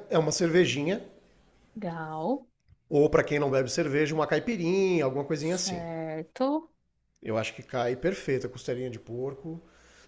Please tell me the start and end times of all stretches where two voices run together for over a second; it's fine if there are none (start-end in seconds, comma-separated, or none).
none